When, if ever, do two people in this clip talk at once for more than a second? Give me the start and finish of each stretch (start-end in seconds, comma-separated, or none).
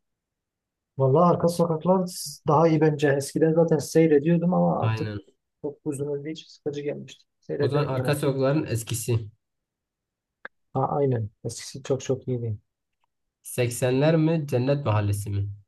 none